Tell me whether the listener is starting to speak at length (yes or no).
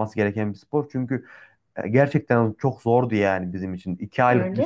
no